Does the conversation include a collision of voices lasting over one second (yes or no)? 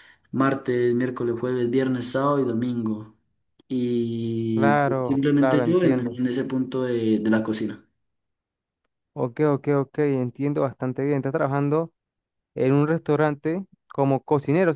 yes